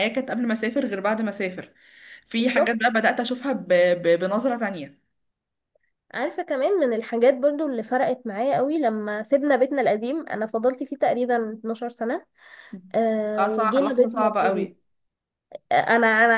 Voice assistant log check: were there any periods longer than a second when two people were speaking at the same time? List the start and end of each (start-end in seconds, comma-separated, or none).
13.4-14.7